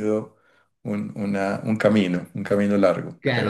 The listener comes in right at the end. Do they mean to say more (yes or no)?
yes